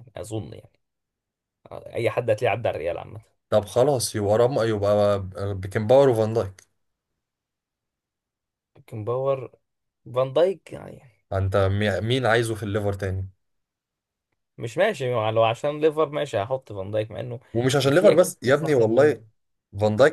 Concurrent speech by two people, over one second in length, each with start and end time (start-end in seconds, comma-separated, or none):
17.9-19.2